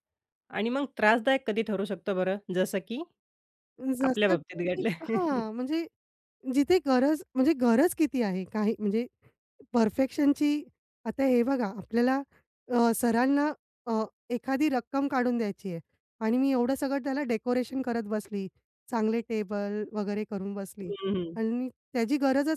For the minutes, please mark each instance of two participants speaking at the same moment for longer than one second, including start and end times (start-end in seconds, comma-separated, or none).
4.0-5.4